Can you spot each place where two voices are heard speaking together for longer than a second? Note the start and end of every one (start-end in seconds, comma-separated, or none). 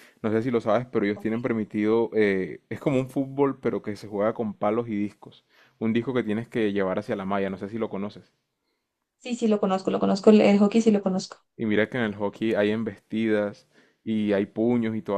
none